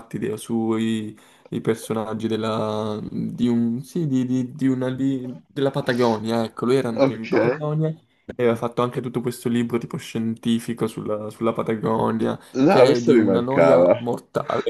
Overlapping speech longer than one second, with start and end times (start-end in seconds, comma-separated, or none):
12.5-14.0